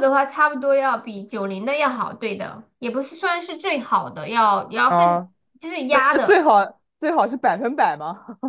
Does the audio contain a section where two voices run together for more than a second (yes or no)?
no